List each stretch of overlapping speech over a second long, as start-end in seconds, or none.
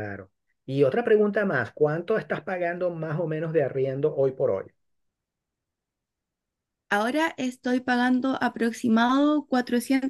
none